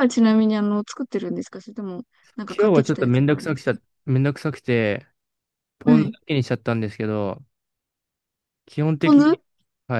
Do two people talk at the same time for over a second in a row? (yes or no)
yes